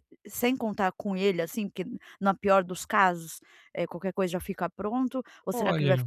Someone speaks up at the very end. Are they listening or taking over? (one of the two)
listening